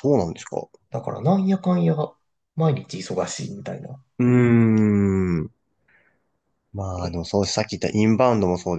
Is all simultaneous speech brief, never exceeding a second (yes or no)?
yes